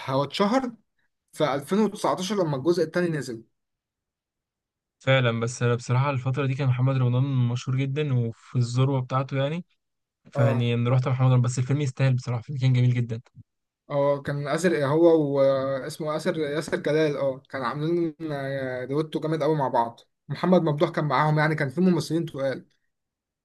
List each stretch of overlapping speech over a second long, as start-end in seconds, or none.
none